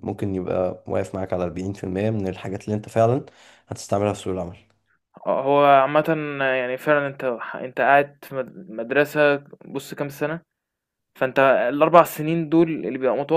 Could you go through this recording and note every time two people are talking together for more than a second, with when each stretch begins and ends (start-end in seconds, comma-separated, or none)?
none